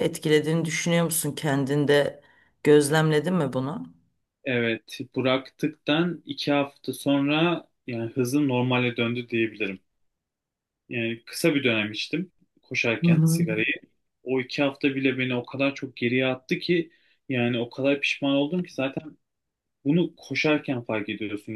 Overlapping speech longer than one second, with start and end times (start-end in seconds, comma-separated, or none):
none